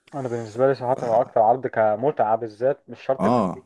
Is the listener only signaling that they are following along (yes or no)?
yes